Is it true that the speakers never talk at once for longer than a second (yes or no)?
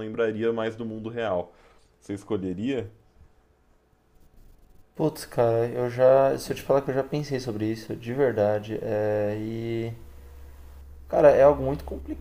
yes